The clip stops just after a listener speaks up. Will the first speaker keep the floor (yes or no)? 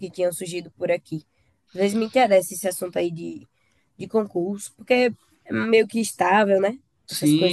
no